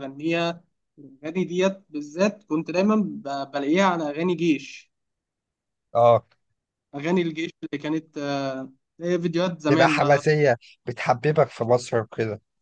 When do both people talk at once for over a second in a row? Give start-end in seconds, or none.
none